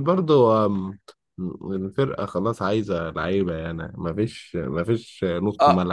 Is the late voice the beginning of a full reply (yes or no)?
yes